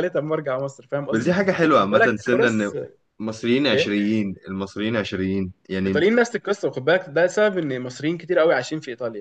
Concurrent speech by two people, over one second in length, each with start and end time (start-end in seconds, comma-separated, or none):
1.1-2.7